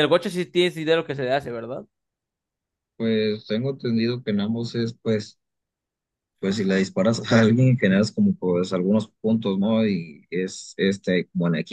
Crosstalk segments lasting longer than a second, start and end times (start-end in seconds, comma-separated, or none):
none